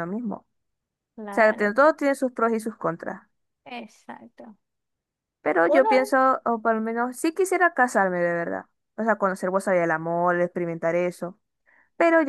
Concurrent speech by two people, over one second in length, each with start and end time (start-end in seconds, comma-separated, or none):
none